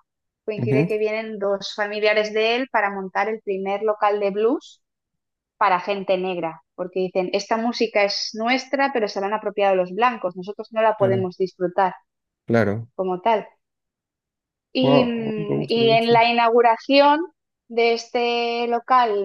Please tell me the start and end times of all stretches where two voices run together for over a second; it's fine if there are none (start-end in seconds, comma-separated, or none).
14.8-16.2